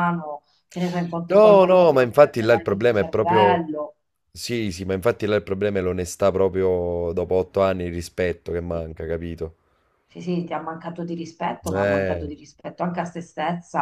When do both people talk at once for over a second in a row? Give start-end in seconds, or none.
1.3-3.7